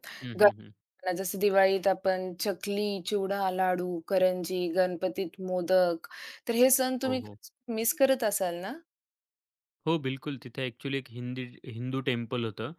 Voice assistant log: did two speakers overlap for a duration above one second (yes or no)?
no